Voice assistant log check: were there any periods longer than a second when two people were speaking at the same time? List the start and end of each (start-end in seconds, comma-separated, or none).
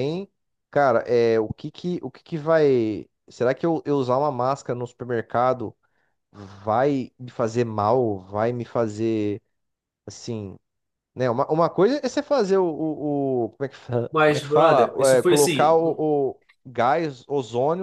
14.1-16.1